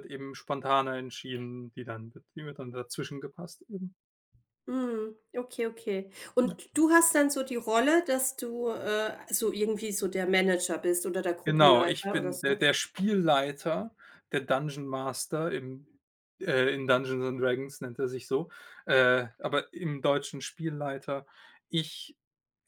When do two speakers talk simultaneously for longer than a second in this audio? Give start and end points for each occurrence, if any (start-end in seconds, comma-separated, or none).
11.4-12.7